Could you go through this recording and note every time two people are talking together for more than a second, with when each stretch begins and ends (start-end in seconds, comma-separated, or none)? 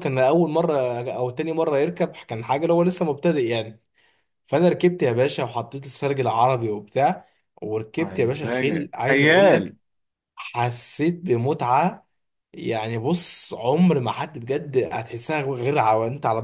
8.0-9.7